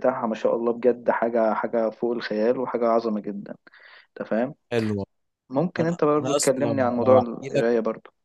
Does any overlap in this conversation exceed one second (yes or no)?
yes